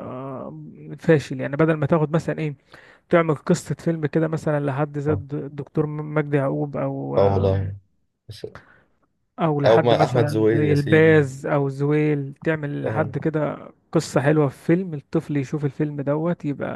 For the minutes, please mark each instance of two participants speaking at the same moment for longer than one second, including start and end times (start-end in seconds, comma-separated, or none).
9.7-11.3